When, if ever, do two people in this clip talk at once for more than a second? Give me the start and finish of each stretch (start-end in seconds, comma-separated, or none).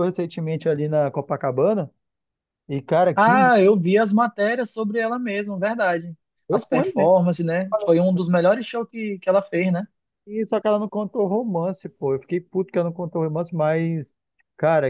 none